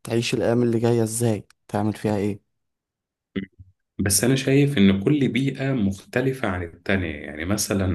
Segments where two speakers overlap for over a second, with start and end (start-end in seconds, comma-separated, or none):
none